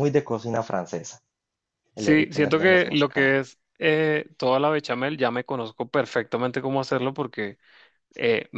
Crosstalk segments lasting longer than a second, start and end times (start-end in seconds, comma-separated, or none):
1.9-3.4